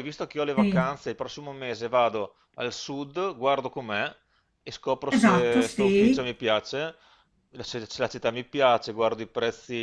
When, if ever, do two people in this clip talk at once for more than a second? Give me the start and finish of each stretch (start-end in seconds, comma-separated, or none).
5.1-6.3